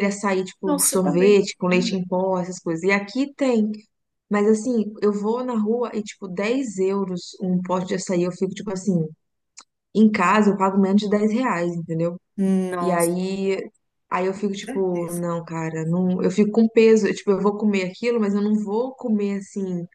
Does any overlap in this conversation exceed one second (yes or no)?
yes